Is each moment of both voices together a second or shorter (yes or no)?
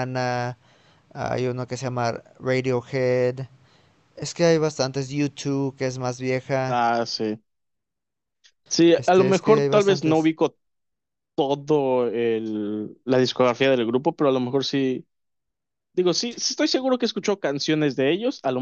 no